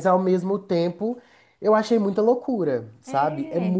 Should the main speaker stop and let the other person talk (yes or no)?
no